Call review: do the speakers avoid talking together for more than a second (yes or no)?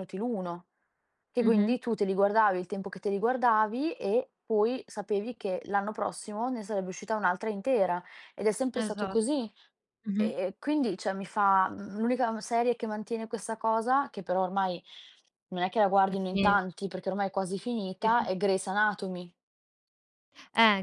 yes